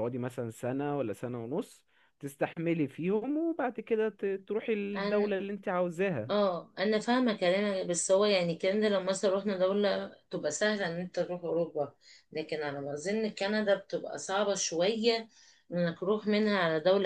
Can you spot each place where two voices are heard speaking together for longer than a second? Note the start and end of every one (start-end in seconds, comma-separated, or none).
none